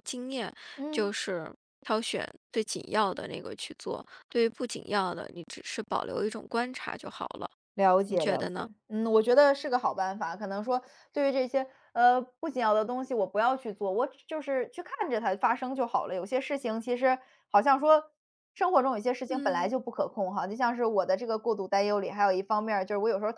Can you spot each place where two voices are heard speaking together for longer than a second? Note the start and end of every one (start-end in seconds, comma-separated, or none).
none